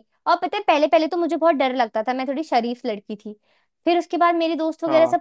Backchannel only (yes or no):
yes